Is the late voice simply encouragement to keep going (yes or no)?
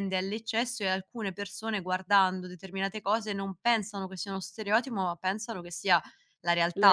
yes